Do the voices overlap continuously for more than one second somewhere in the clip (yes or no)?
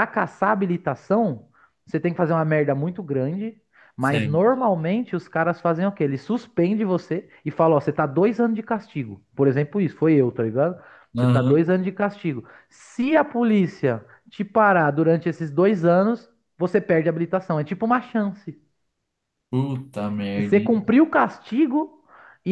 no